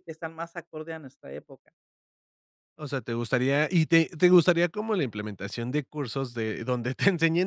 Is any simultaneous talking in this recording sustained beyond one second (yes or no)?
no